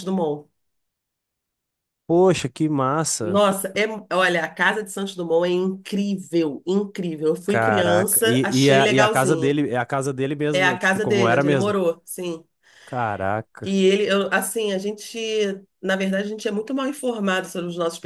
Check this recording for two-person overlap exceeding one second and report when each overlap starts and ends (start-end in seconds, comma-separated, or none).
7.5-9.6, 10.5-11.7